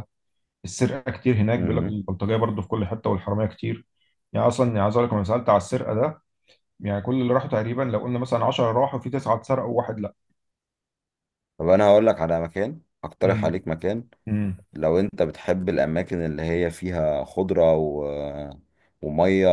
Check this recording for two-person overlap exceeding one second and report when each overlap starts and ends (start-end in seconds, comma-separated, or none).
none